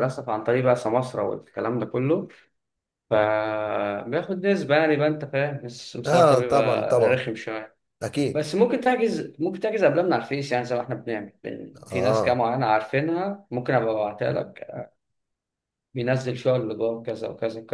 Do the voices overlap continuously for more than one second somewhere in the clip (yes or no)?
yes